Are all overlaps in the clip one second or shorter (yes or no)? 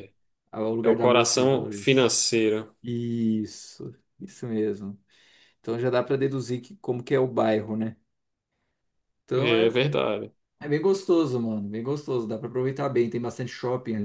no